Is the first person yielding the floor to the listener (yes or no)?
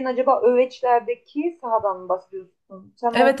yes